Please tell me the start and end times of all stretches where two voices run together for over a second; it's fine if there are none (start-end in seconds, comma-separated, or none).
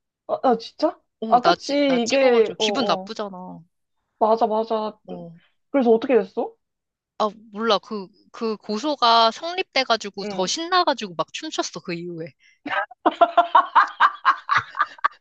1.2-3.1